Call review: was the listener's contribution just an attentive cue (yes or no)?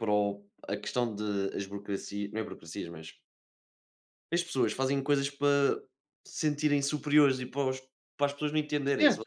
no